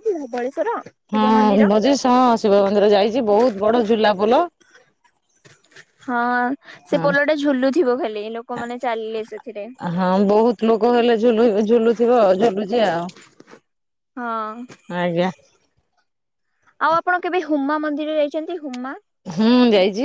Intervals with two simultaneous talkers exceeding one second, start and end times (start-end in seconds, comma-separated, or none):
none